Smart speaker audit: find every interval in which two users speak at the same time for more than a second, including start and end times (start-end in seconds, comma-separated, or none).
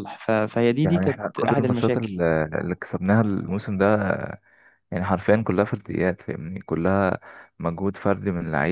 0.8-2.2